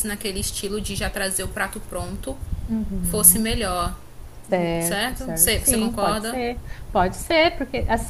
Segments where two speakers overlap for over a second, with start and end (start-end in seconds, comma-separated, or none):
4.8-6.4